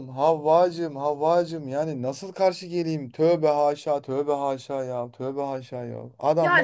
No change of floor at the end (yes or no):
no